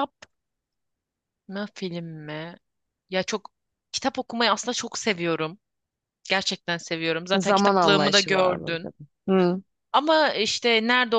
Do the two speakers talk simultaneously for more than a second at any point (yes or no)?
yes